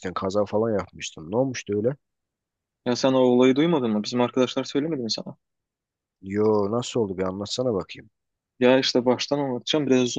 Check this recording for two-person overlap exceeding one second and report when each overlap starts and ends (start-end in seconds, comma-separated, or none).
none